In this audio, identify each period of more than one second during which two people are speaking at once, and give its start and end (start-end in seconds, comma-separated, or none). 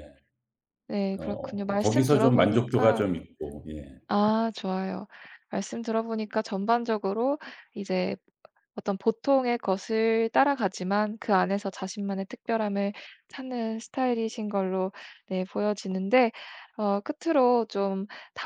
1.2-3.1